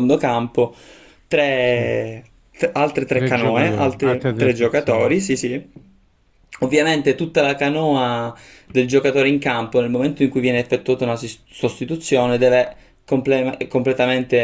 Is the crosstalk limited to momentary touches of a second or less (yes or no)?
no